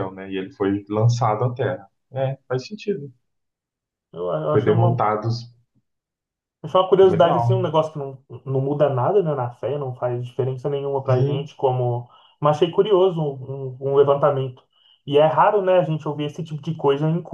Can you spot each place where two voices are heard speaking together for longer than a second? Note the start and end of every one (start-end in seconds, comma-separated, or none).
none